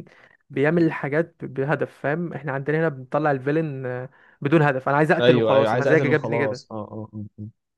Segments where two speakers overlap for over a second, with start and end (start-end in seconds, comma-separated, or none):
5.2-6.6